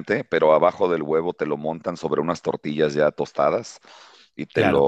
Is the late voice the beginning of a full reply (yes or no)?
no